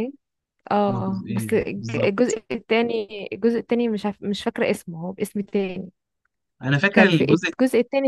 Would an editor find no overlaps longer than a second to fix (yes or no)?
no